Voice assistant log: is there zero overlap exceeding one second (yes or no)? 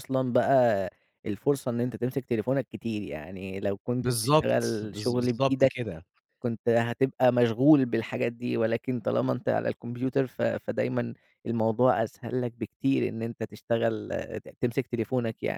no